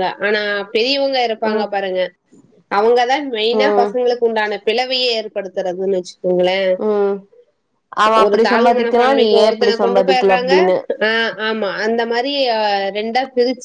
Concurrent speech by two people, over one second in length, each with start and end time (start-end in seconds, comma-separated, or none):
8.8-10.5